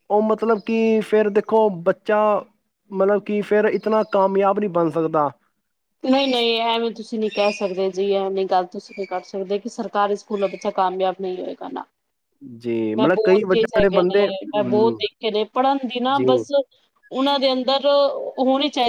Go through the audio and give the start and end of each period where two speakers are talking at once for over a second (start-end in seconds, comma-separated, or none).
13.0-15.0